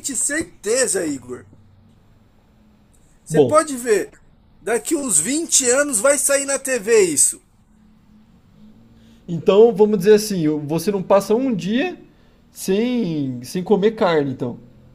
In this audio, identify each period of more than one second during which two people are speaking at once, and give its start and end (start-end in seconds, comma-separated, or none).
none